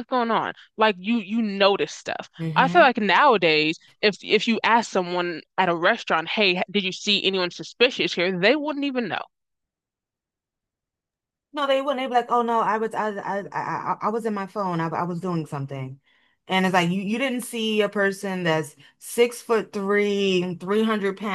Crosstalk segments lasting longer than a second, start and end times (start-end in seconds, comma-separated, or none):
none